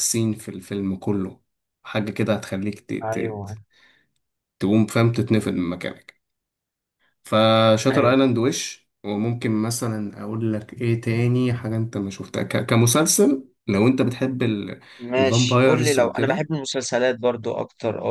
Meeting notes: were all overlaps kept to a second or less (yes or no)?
no